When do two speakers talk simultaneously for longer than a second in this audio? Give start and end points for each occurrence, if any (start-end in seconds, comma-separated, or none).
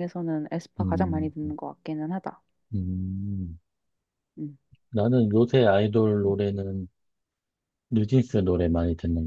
none